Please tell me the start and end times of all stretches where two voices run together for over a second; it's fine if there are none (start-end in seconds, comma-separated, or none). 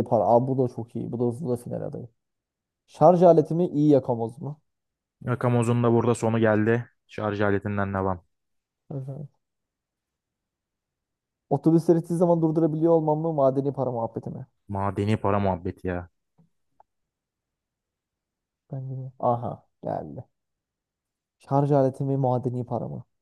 none